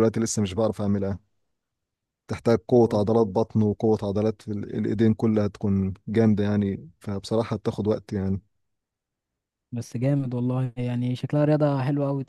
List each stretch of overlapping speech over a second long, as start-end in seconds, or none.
none